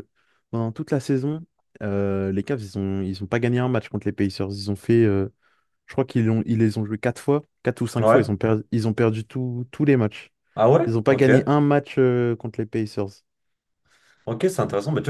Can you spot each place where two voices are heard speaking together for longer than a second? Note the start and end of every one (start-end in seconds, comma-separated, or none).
none